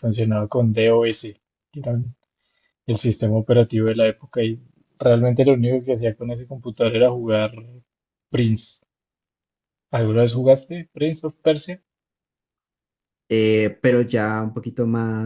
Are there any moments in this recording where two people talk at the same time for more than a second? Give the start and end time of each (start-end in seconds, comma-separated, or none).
none